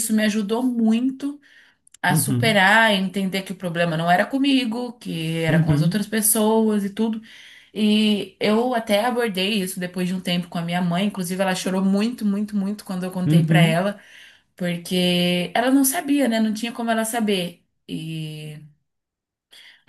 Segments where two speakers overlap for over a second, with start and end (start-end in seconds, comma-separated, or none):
none